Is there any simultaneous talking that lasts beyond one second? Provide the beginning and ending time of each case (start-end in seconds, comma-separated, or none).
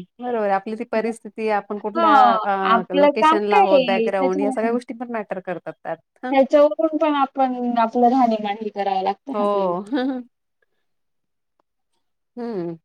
2.9-4.7